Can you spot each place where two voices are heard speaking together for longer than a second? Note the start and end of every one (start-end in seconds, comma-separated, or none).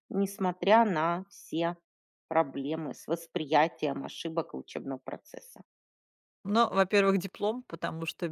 none